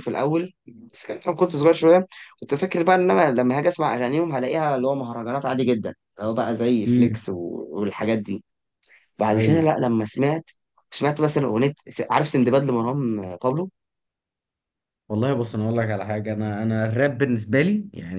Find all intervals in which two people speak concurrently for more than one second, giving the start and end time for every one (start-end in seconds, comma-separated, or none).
none